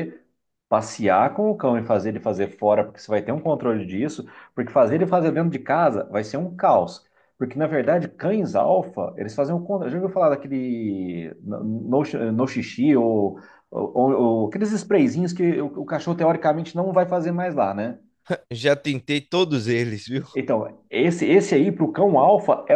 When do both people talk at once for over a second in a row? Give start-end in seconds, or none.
none